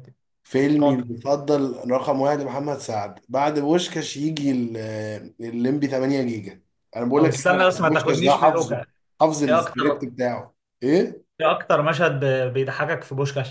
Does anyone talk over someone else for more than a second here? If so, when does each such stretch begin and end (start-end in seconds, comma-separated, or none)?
7.2-8.8